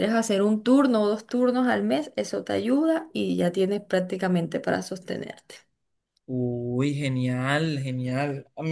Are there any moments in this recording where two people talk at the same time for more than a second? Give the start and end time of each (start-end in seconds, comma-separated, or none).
none